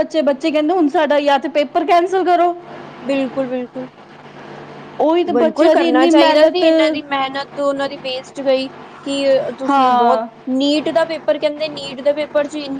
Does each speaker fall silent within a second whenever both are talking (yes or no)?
no